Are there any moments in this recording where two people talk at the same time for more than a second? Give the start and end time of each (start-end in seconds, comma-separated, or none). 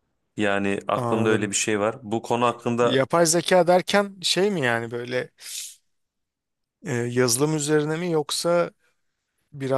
none